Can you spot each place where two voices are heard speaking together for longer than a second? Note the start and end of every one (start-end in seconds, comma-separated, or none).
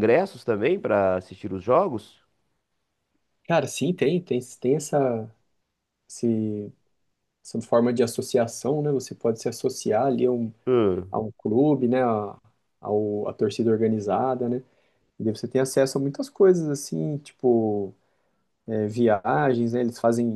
none